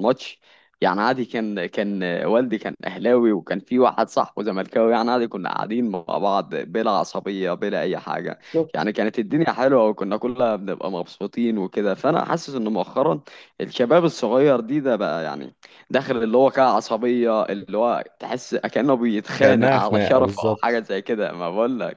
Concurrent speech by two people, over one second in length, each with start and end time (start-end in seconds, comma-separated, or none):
19.4-20.8